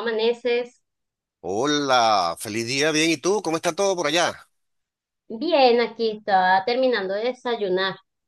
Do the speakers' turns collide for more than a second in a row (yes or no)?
no